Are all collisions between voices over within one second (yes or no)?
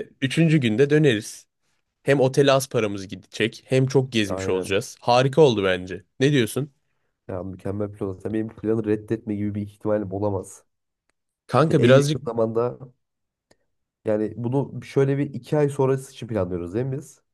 yes